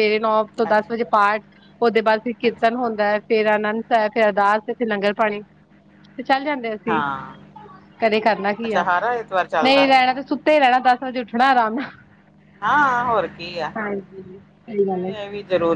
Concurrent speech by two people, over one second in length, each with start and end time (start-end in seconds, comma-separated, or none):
13.8-15.1